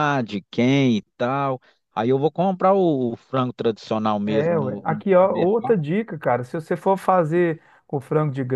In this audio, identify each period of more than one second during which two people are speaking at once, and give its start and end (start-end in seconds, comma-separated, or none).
4.2-5.8